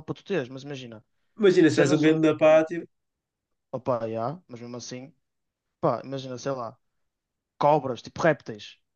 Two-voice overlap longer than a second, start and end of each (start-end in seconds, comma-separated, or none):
none